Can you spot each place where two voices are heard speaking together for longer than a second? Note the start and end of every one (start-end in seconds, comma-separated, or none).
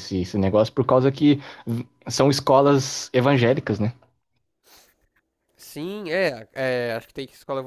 none